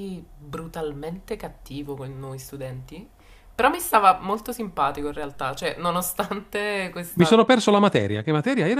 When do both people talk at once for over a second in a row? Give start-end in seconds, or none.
none